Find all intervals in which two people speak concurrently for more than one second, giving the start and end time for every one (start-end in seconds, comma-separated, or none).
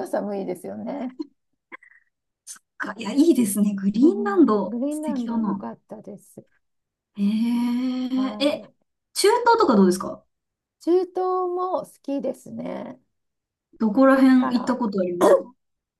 4.0-5.6